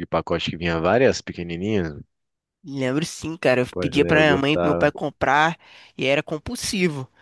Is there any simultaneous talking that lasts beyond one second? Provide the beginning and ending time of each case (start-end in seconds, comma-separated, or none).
3.7-4.9